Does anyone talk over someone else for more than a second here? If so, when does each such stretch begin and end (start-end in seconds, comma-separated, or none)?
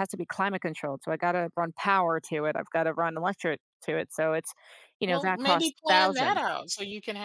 5.1-6.4